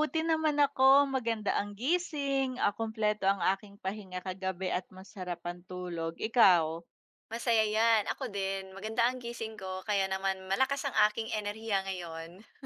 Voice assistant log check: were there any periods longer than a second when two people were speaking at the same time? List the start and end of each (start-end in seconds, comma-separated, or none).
none